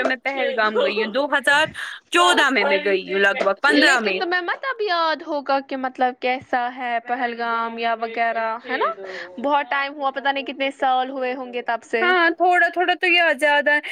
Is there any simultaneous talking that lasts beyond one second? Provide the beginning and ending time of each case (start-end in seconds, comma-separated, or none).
none